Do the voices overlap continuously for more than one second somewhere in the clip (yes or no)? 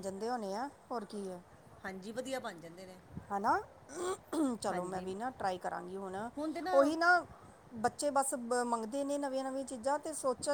no